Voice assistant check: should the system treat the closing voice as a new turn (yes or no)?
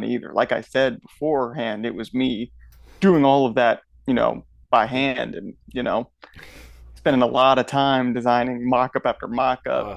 no